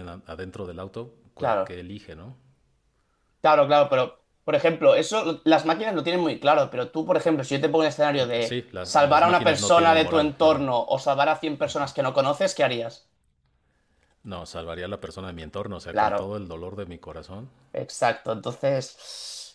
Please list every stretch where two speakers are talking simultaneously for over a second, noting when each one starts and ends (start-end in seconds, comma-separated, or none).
8.4-10.6